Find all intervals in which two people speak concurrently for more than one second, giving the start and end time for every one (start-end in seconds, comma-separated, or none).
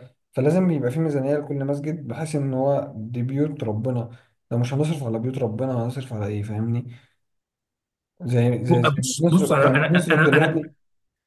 8.7-10.6